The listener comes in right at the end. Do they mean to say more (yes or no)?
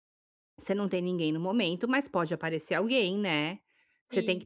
no